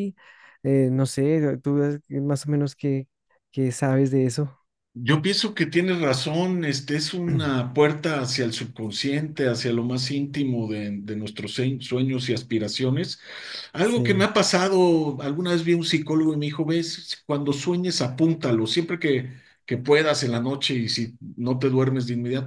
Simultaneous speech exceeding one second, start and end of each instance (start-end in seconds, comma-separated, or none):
none